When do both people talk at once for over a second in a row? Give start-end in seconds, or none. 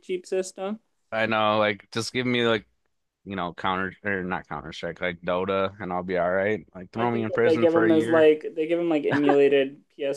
7.0-8.3